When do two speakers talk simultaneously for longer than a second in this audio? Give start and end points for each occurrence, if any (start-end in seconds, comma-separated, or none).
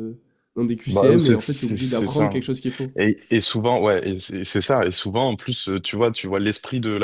0.9-2.3